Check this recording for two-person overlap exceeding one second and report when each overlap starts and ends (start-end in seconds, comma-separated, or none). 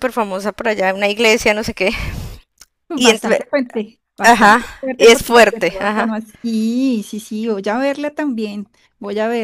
4.2-6.1